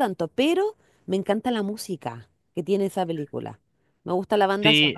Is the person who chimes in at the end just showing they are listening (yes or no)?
no